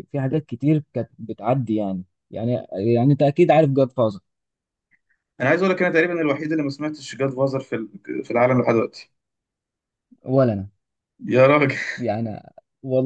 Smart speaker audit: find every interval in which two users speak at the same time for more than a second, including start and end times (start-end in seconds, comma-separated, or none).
none